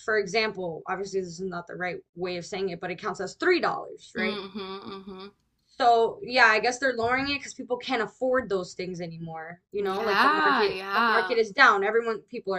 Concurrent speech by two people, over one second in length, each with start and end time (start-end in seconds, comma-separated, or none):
9.8-11.4